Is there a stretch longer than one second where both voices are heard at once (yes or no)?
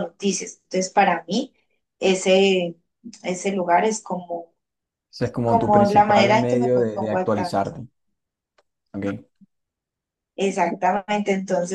yes